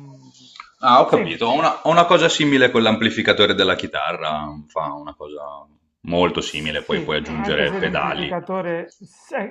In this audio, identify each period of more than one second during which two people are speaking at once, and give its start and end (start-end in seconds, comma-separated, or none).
6.4-8.3